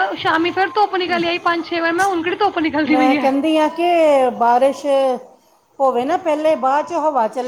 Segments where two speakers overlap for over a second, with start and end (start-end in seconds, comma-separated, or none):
none